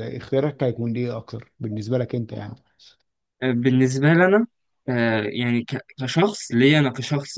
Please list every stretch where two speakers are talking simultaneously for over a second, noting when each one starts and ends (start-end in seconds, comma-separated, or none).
none